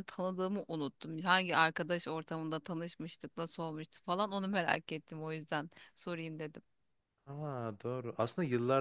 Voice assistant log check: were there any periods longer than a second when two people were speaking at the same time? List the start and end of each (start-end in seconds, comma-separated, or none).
none